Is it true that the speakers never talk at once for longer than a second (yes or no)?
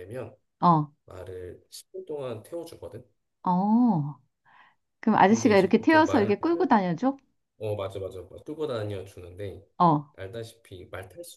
no